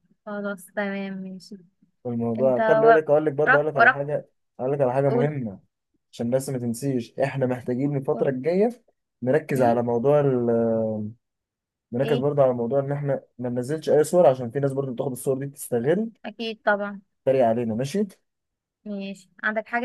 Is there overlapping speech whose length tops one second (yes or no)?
yes